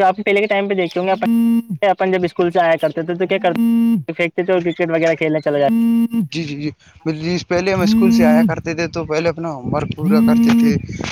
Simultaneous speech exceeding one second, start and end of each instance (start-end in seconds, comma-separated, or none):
none